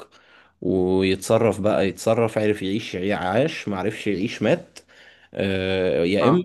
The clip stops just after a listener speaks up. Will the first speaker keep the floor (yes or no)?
yes